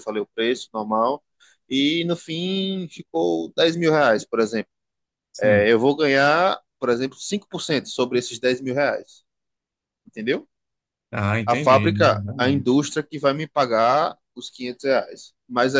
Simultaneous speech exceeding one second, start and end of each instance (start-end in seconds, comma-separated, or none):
11.4-12.8